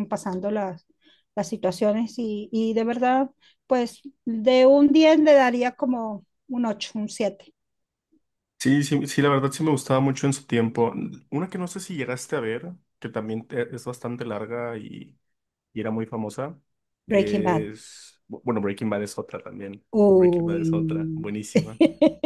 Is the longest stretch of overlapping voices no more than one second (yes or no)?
no